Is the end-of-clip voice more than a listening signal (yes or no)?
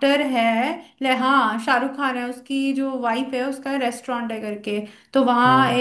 no